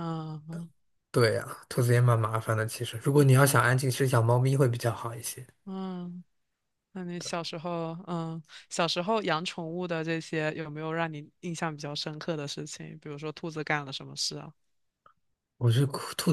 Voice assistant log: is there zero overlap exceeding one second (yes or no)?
yes